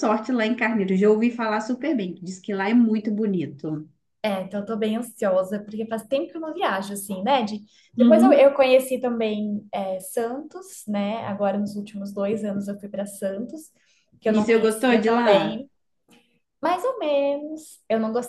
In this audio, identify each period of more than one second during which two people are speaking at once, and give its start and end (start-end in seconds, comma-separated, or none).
14.3-15.6